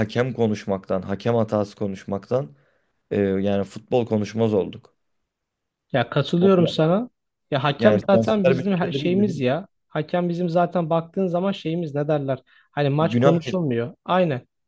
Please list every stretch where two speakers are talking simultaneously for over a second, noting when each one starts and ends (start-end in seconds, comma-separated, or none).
7.8-9.0